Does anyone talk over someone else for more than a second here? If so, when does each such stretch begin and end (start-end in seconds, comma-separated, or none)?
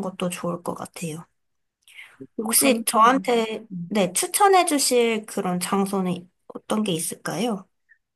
2.4-4.0